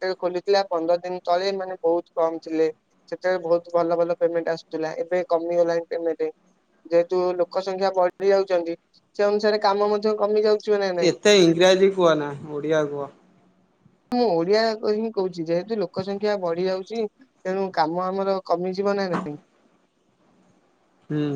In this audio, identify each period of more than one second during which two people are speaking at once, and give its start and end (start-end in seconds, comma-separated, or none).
none